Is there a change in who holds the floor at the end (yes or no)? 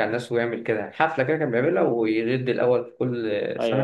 yes